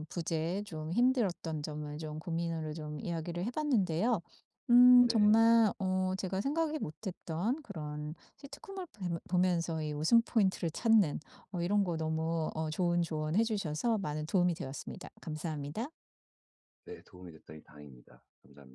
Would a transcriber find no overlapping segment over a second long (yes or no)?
yes